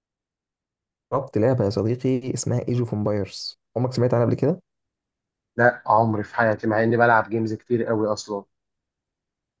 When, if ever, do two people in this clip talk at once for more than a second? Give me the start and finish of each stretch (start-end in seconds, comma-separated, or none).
none